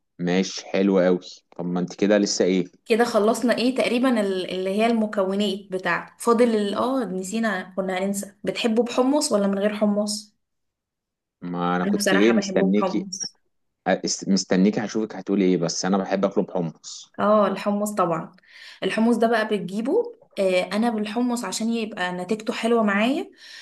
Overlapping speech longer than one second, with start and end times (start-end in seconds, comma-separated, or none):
11.9-13.1